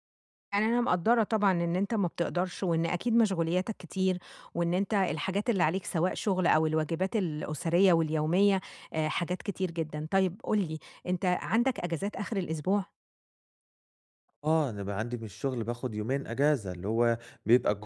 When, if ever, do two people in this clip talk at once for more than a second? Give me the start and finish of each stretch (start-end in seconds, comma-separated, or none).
none